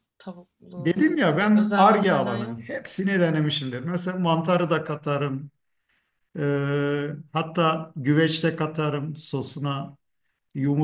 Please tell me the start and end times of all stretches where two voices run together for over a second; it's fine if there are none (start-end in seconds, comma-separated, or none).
0.8-2.6